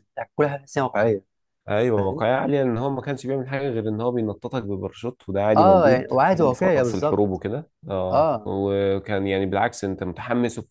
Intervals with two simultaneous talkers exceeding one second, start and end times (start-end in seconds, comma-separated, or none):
5.6-7.4